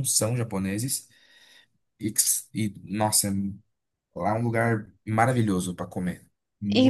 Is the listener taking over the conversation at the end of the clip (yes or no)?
yes